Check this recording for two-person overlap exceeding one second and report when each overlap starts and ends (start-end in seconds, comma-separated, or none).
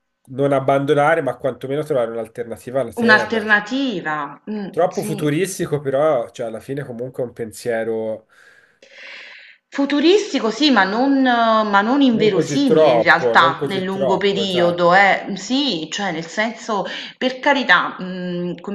12.1-14.9